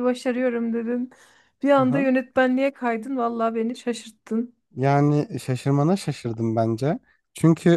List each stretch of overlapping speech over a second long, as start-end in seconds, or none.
none